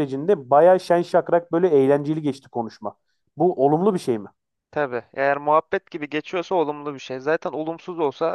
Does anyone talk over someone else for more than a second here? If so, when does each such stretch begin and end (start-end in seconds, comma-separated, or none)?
none